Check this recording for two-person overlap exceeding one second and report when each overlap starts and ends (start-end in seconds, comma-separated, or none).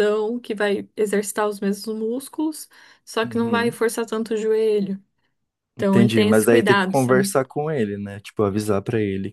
5.8-7.3